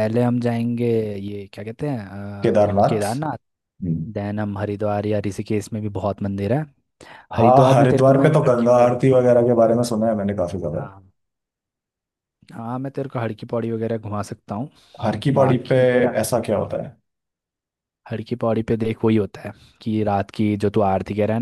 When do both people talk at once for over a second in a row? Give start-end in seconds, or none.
7.3-9.0